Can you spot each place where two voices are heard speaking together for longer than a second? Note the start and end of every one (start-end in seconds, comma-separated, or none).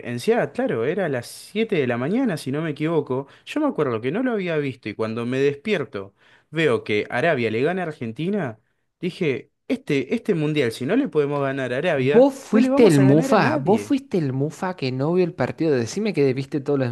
11.9-13.9